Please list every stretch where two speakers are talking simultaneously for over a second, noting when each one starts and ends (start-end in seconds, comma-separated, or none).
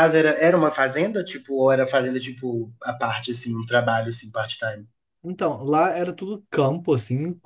none